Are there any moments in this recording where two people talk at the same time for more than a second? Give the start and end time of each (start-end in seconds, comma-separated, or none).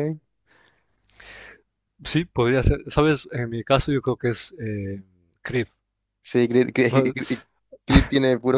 none